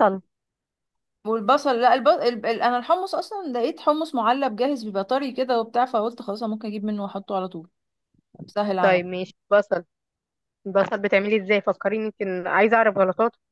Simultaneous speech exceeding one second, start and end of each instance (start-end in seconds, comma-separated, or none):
none